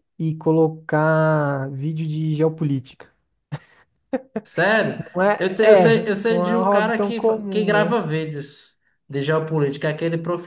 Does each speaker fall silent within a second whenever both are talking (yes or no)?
no